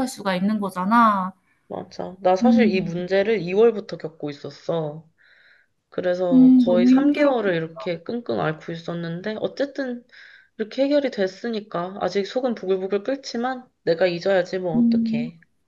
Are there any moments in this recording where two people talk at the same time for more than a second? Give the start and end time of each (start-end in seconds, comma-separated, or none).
6.3-7.5